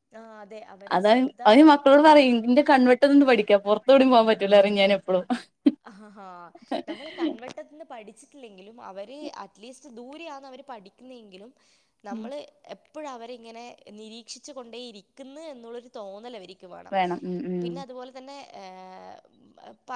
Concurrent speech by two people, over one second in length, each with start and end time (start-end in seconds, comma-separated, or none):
none